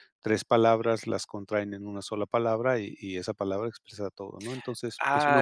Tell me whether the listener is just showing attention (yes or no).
no